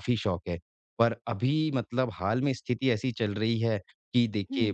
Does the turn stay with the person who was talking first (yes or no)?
yes